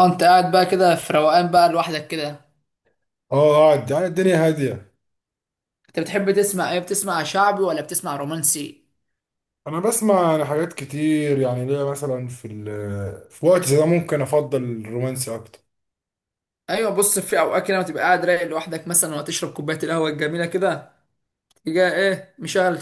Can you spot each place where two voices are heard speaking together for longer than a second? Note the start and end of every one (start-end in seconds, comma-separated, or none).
none